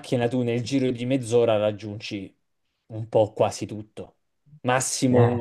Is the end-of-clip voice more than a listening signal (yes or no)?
no